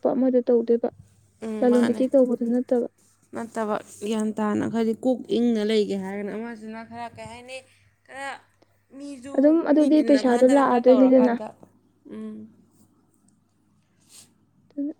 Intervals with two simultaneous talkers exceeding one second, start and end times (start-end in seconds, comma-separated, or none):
9.8-11.3